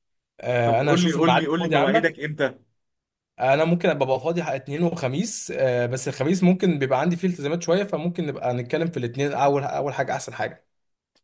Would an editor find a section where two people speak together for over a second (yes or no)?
yes